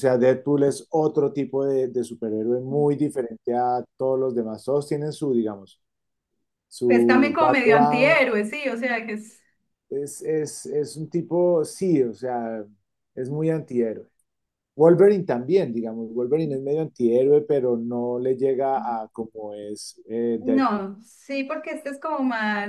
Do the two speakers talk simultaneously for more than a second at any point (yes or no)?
yes